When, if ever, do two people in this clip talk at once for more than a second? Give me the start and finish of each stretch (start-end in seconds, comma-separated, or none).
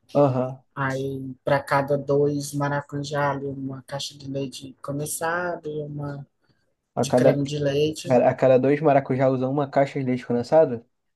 none